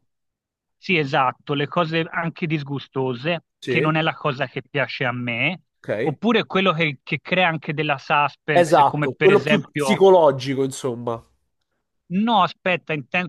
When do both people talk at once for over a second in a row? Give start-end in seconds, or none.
8.5-10.0